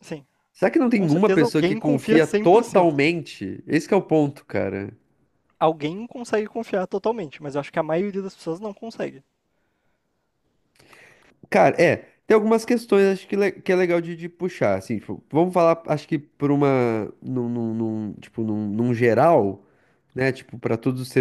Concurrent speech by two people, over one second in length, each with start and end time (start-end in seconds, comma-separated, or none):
0.9-3.0